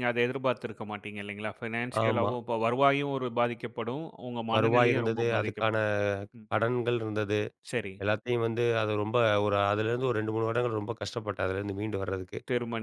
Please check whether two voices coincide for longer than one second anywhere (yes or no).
yes